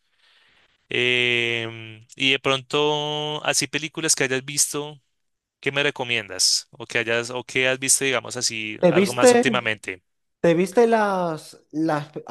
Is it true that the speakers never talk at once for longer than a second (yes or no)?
yes